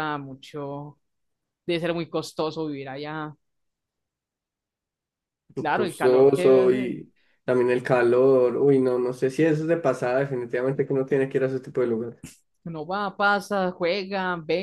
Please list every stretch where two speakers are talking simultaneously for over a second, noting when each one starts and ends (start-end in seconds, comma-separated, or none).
5.7-6.9